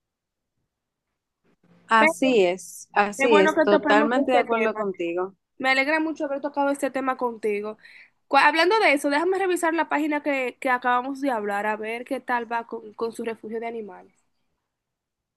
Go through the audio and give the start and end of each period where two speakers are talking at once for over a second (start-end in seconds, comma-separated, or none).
3.2-4.8